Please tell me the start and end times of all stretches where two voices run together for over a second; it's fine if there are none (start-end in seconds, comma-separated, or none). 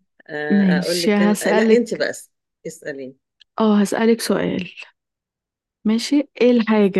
0.5-2.0